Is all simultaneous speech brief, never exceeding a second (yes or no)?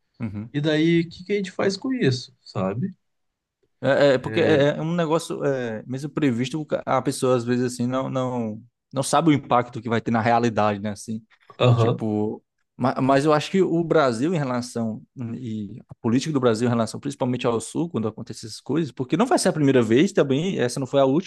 yes